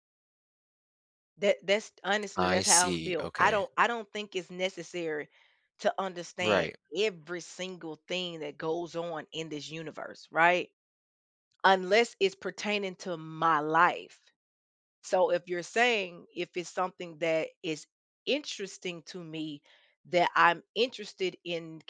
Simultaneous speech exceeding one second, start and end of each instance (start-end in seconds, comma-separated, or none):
2.4-3.6